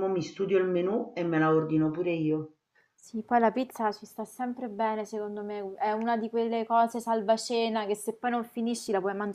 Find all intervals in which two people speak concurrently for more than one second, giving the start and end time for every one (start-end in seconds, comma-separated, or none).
none